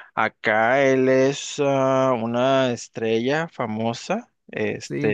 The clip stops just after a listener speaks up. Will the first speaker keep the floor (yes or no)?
yes